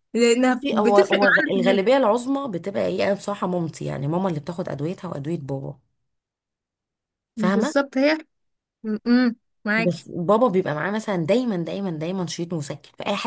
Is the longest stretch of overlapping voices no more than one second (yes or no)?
no